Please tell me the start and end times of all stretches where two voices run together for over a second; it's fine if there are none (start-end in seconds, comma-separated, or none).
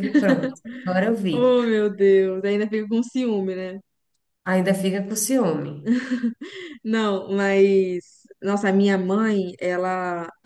none